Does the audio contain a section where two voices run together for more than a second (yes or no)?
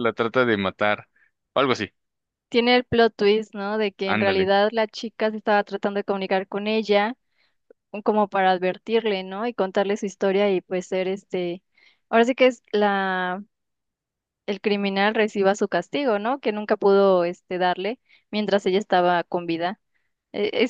no